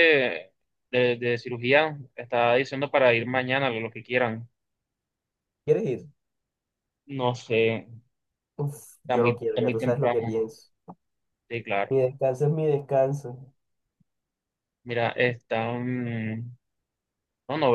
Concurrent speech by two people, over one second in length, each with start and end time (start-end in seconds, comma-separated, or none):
9.0-10.5